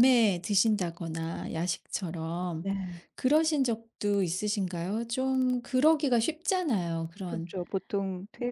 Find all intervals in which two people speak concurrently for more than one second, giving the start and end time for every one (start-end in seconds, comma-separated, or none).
none